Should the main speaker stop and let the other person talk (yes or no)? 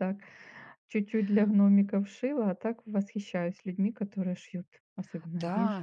yes